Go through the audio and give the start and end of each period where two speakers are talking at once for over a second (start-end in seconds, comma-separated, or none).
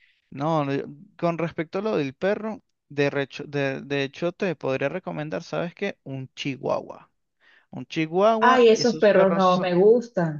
8.4-9.7